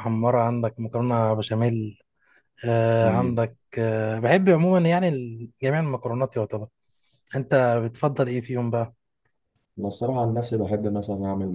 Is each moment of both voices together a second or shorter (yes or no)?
yes